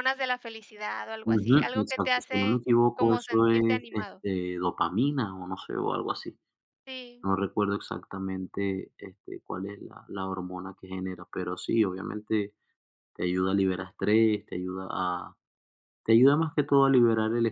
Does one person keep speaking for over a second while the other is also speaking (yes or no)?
yes